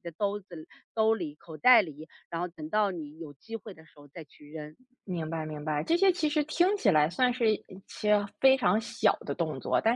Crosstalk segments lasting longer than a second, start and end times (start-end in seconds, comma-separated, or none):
none